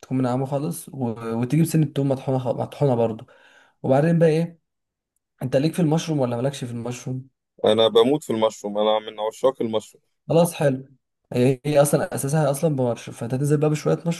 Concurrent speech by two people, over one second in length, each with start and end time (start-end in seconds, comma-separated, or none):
none